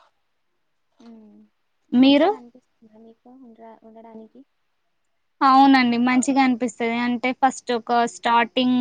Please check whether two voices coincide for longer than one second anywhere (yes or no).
no